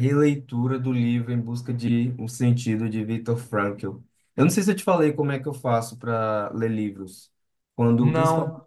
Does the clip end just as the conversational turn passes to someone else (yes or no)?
no